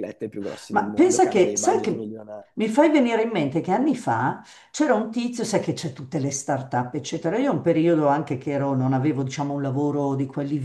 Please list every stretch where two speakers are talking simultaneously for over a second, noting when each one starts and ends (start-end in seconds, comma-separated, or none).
0.7-2.1